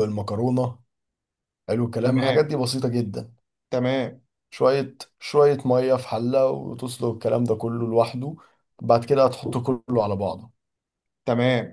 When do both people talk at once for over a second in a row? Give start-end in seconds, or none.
none